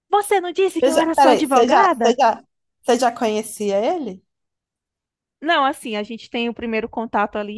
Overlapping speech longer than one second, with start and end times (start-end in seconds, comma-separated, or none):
0.8-2.2